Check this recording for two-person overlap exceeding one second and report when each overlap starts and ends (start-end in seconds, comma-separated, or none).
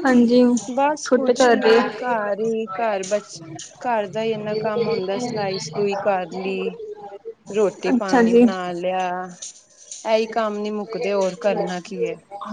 1.0-2.9